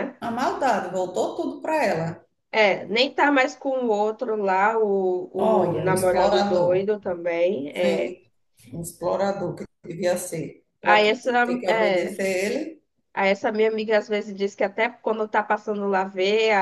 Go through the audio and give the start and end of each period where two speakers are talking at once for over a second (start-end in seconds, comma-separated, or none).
5.4-6.9